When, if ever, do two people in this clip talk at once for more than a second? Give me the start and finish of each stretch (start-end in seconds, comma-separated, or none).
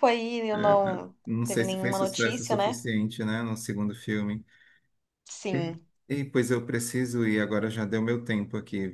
0.5-2.8